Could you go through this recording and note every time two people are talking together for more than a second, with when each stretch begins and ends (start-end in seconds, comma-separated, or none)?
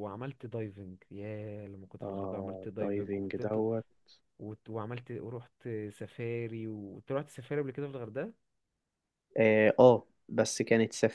2.0-3.6